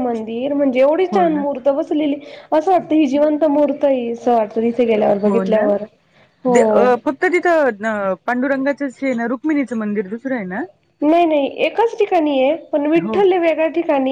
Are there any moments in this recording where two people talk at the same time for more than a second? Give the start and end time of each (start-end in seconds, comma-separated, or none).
none